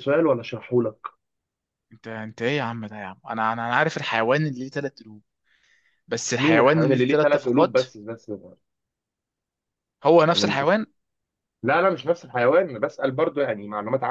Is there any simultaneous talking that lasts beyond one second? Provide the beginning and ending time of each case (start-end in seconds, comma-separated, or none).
6.4-7.8